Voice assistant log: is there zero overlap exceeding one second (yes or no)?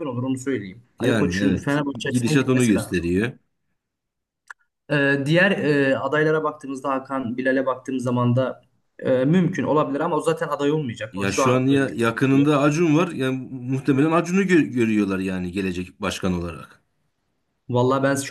no